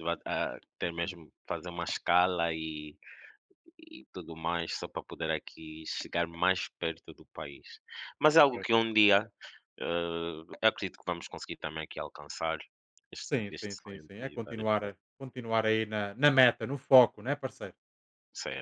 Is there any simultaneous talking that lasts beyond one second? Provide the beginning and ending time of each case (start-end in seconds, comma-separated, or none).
13.3-15.0